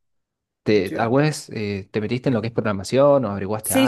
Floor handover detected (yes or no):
yes